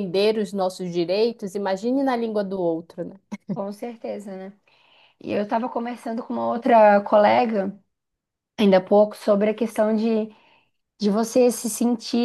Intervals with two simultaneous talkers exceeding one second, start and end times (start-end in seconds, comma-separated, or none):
none